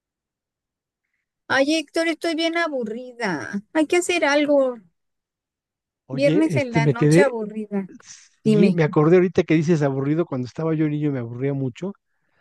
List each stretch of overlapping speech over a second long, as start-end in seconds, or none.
6.1-7.3